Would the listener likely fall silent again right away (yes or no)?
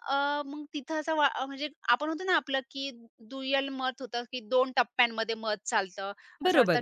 no